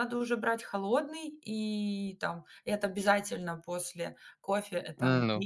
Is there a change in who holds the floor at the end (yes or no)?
no